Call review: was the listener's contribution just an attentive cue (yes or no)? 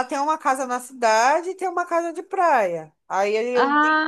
yes